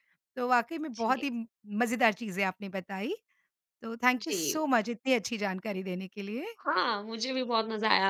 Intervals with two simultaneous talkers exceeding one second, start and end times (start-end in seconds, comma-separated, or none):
none